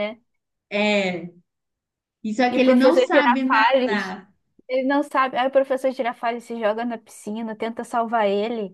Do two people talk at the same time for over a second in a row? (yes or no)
yes